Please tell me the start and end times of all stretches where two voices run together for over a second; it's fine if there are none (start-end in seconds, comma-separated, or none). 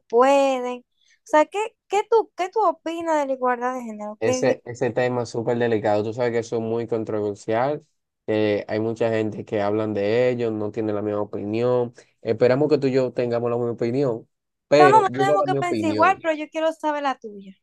14.8-16.2